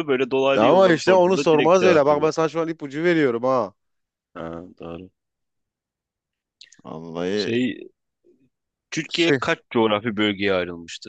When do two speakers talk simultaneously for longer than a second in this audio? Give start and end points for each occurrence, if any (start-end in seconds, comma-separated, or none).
0.6-2.3